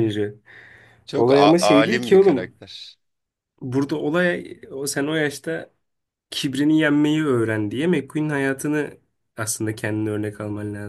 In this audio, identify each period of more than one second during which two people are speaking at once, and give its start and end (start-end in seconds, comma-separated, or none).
1.2-2.5